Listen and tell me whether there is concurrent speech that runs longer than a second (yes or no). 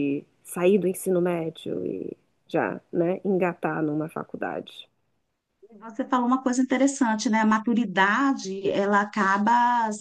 no